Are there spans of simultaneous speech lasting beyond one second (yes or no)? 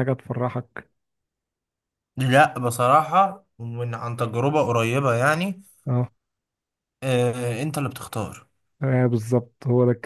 no